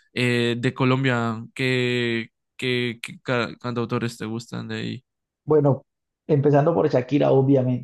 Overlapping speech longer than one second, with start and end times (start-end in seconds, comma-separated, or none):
none